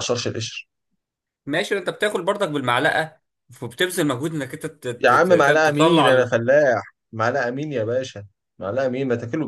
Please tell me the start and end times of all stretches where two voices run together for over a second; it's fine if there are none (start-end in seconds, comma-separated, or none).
5.0-6.3